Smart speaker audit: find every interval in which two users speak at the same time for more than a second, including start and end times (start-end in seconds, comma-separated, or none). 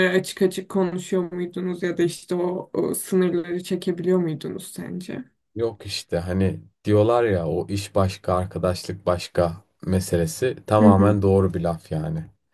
none